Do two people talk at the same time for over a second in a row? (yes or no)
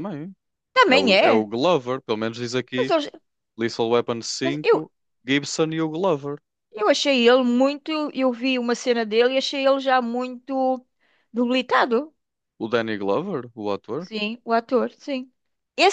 no